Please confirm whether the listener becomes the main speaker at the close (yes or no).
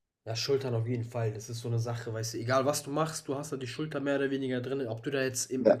no